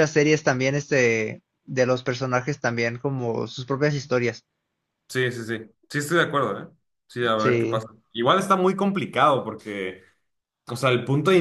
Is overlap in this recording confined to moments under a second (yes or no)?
yes